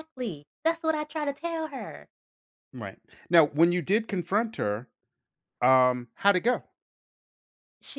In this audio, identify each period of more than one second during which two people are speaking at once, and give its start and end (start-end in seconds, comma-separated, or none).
none